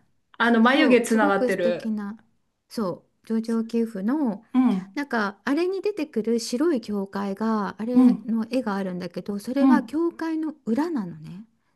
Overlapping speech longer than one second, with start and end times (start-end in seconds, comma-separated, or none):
0.6-1.9